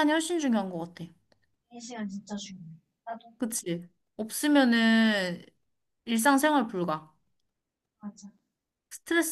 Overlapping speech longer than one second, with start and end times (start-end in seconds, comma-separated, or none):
none